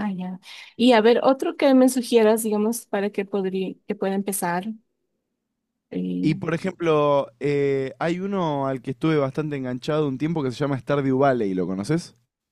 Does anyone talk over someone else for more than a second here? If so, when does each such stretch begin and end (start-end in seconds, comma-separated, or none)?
none